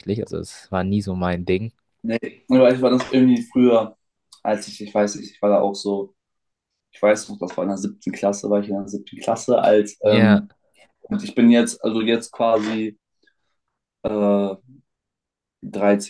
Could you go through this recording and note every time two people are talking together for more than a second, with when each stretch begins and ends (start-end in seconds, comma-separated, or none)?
none